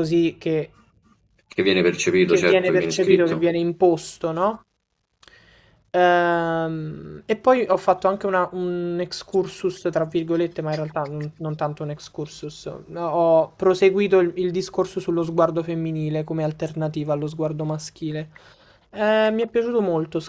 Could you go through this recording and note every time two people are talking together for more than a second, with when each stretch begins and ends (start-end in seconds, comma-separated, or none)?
2.2-3.5